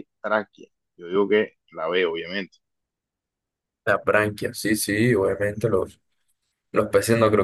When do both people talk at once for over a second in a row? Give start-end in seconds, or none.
none